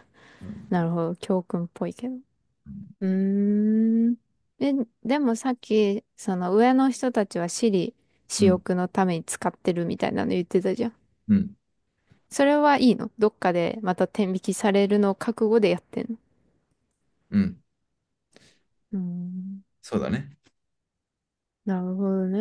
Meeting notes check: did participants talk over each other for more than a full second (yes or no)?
no